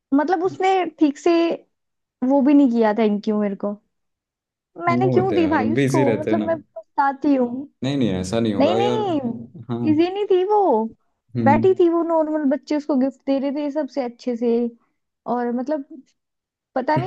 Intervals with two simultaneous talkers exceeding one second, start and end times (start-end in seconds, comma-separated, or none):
4.9-6.5